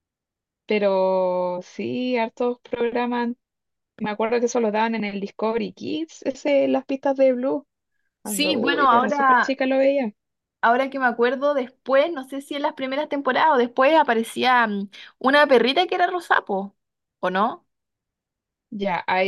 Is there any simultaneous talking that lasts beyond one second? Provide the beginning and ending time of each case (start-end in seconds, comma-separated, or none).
8.2-9.6